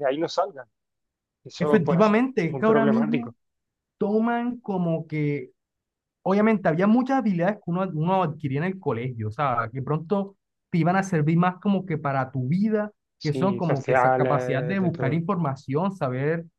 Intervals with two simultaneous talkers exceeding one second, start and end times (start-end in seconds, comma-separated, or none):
1.6-3.3, 13.2-15.2